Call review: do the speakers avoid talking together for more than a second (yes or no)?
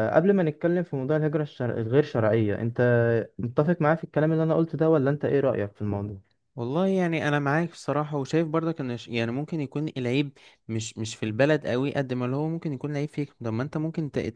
yes